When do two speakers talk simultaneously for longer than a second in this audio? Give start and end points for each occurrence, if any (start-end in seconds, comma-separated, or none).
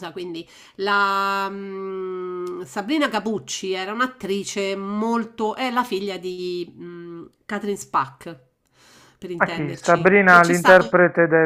9.4-10.9